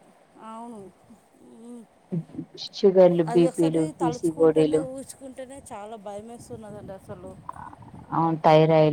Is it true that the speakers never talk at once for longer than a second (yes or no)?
no